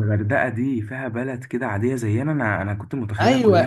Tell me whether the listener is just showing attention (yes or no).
no